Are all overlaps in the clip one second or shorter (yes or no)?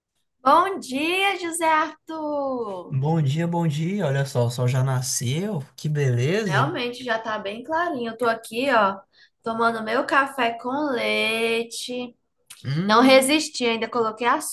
yes